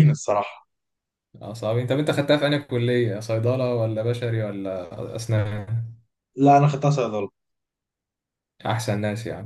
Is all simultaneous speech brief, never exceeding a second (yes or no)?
yes